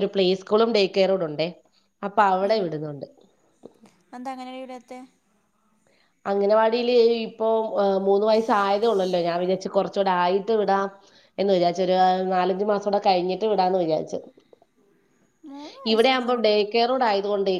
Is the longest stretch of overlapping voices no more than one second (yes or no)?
yes